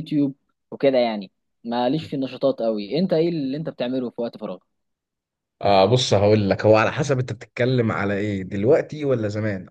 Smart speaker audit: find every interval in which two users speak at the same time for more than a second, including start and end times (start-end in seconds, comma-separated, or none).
none